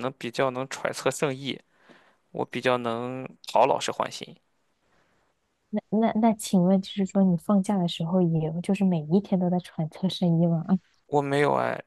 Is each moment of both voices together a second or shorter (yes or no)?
yes